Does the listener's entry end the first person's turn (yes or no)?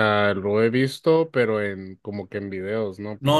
yes